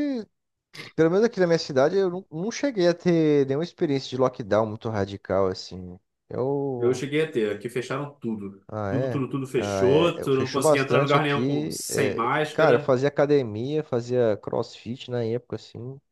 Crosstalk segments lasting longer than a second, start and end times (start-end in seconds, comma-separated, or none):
8.7-12.9